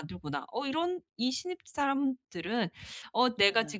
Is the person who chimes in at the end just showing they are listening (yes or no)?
yes